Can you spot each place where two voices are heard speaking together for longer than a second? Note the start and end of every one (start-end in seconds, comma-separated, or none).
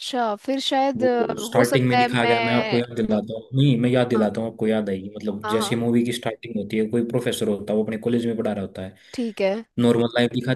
1.0-2.8